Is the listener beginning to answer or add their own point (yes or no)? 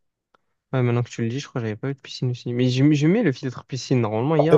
yes